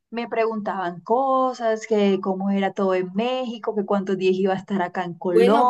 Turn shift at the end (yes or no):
yes